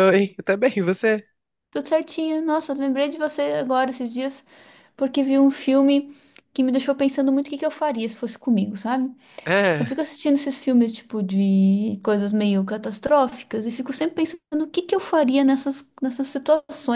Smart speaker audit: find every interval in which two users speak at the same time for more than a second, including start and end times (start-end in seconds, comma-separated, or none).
none